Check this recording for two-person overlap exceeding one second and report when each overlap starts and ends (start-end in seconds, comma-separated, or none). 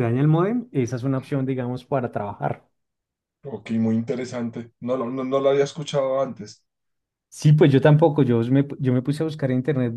none